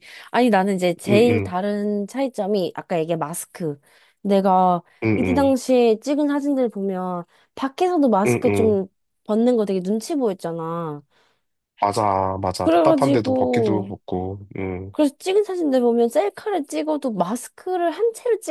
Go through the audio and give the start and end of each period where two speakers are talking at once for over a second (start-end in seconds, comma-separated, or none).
12.6-13.9